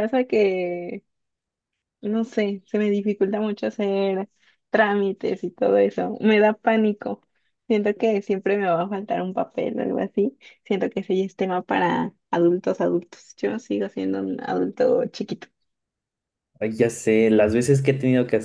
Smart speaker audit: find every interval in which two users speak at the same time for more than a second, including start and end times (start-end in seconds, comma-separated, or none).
none